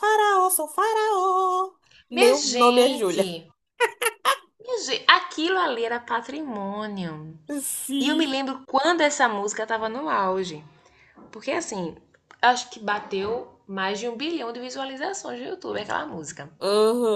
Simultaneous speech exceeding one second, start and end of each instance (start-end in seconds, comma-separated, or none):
2.1-3.3